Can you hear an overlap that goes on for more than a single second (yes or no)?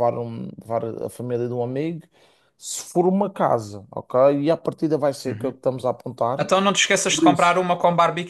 no